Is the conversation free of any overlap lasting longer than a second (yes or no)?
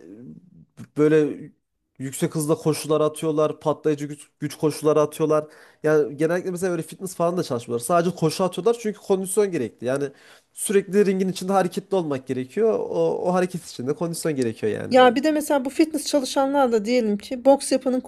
yes